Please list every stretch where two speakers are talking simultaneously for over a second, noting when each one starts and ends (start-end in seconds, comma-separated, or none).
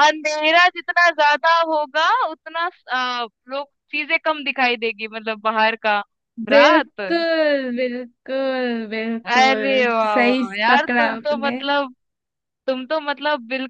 9.3-11.6